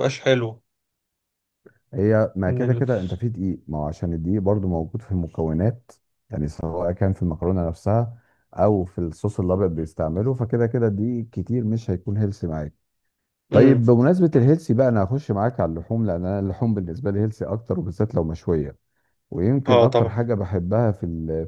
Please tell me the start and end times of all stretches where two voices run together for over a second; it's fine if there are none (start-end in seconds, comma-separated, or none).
none